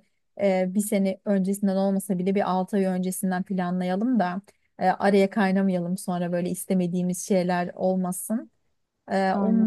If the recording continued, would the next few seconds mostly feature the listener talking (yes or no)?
no